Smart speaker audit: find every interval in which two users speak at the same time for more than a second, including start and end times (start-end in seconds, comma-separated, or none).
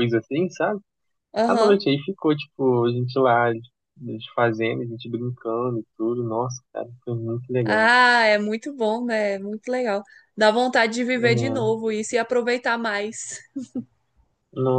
none